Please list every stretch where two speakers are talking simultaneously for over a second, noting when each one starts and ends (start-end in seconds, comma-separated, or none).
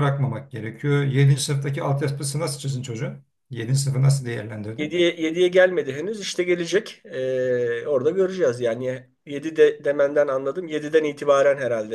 none